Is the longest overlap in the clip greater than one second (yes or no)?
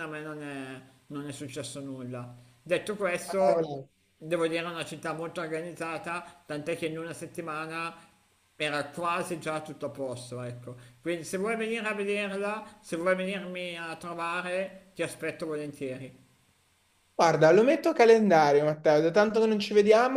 no